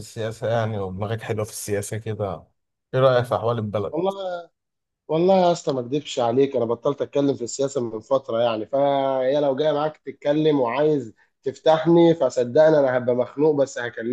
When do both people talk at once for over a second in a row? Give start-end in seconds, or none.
none